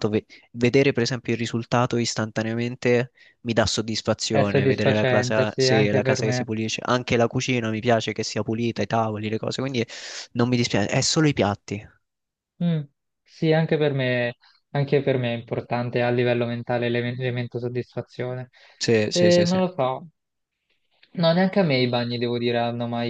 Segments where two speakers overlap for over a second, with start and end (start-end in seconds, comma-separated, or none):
4.3-6.4